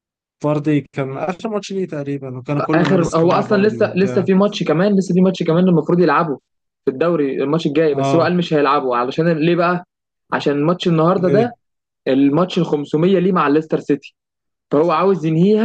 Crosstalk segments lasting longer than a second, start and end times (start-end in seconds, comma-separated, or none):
2.7-4.3